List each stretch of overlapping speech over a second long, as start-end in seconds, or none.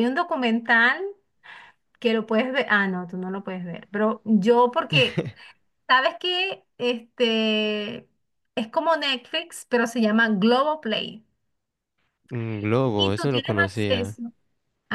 12.9-14.2